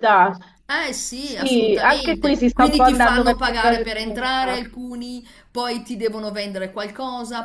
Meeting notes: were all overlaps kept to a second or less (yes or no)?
no